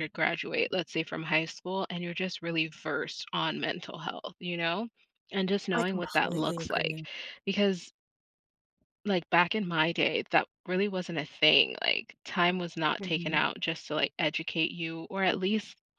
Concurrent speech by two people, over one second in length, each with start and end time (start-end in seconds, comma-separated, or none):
5.8-7.0